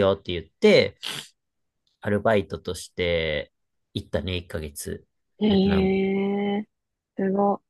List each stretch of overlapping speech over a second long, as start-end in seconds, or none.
none